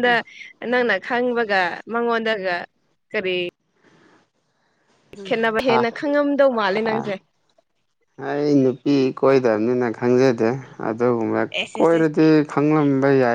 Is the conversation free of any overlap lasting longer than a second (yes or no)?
yes